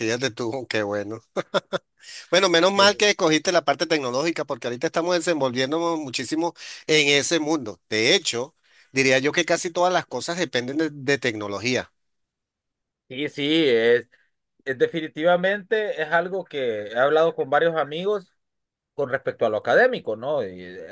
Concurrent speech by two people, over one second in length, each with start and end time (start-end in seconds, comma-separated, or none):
none